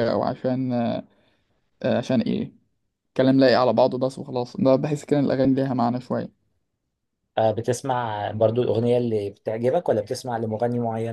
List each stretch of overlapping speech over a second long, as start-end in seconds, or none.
none